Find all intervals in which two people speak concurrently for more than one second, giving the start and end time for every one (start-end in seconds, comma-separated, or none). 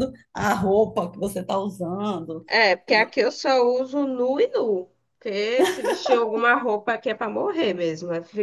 none